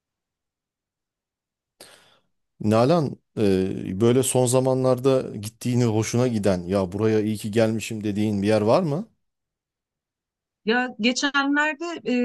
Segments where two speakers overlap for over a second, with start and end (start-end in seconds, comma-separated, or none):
none